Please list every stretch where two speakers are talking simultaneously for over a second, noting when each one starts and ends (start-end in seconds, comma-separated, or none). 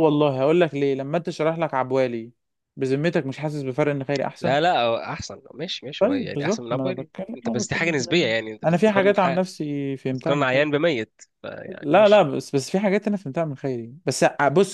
6.0-9.4